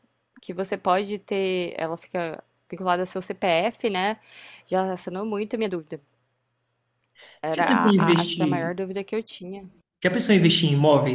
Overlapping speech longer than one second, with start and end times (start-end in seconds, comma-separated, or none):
7.5-8.7